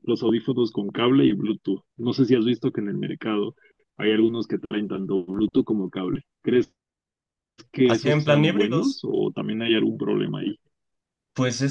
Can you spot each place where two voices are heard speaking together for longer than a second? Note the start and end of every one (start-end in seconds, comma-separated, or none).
7.8-9.1